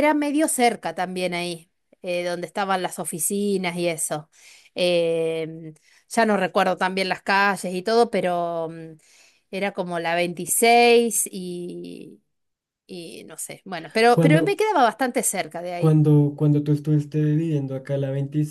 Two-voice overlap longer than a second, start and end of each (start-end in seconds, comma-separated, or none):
none